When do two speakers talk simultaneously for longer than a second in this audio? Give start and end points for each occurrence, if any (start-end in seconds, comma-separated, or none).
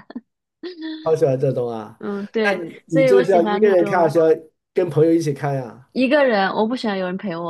2.4-4.2